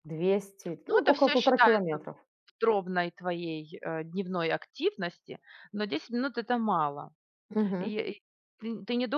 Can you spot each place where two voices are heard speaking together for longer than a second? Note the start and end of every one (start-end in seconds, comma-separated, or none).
0.9-2.1